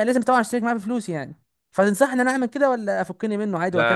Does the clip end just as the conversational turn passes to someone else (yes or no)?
yes